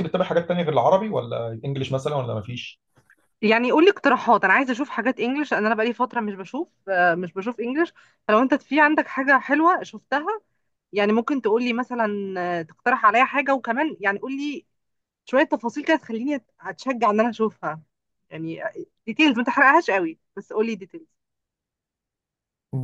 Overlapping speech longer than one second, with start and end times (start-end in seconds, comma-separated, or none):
none